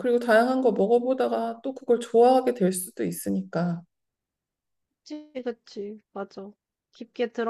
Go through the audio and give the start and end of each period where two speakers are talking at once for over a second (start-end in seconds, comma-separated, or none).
none